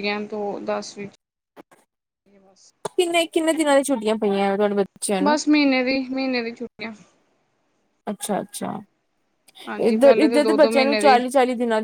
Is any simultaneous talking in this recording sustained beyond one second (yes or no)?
yes